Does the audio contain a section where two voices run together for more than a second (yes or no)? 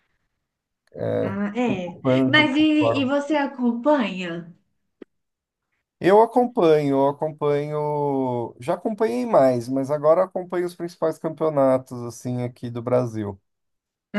yes